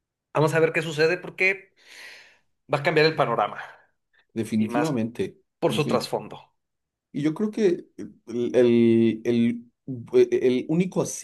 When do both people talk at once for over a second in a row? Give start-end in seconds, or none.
none